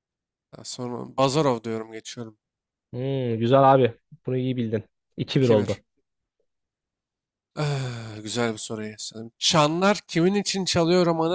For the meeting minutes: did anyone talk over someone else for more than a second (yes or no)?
no